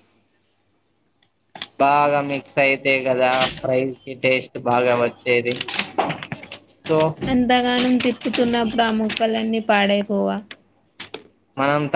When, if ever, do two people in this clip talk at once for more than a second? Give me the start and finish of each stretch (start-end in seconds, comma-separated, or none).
none